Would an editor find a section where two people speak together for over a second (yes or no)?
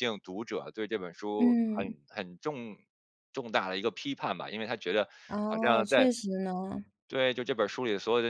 no